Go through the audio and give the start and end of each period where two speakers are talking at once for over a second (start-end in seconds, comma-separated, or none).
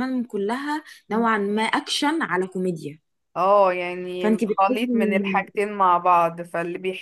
4.2-5.5